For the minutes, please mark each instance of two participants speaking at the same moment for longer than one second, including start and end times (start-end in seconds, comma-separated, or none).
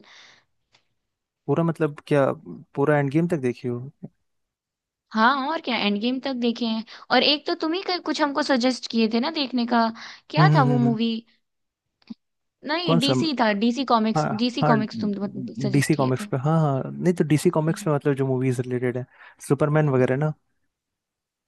none